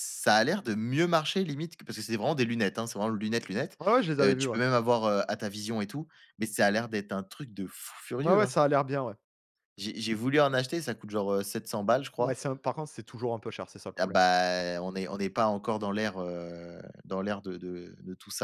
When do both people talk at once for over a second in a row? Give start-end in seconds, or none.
none